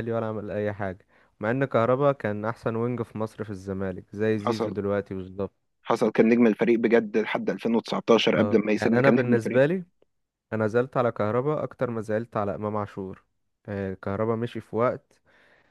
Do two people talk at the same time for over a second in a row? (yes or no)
yes